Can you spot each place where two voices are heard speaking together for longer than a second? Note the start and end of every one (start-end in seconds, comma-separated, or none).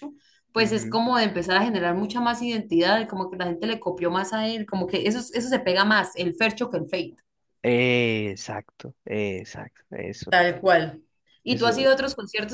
none